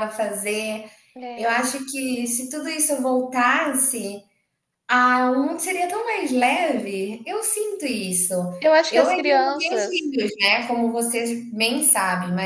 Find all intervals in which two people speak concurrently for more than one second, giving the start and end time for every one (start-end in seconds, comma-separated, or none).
8.9-10.2